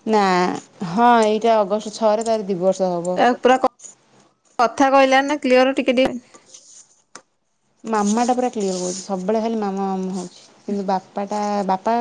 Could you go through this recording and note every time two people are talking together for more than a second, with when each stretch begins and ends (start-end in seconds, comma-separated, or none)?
none